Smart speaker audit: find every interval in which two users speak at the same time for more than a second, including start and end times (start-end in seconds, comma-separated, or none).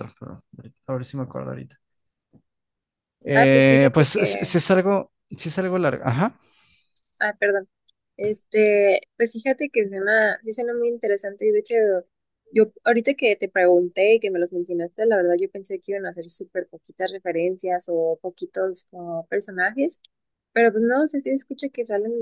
3.3-4.6